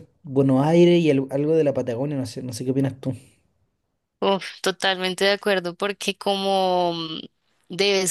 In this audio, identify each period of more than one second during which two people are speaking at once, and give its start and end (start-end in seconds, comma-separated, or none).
none